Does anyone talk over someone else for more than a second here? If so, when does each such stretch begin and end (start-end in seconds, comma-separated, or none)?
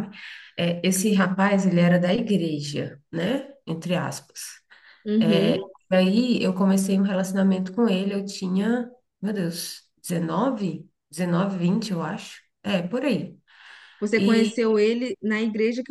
none